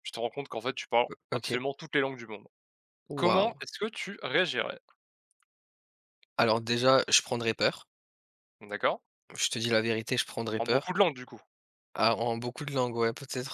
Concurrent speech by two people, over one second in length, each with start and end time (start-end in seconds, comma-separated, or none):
none